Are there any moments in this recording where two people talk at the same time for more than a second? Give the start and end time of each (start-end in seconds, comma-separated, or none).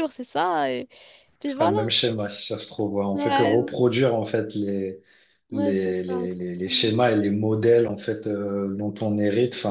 5.5-7.0